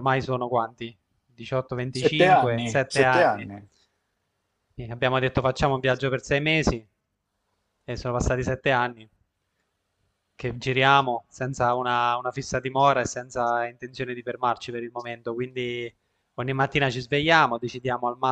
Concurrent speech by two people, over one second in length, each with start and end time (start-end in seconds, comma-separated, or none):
1.9-3.5